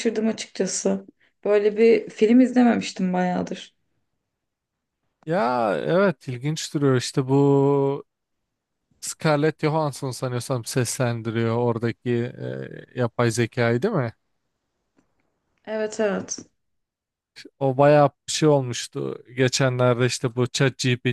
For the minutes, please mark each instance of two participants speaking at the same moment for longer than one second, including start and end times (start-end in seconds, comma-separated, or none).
none